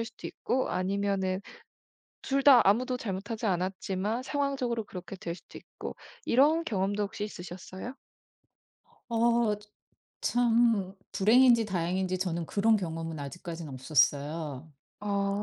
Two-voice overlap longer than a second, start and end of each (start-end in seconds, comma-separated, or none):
none